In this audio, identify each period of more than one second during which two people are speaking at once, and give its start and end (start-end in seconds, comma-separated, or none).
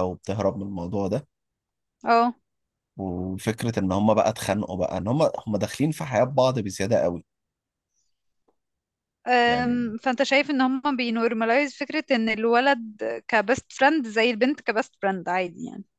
none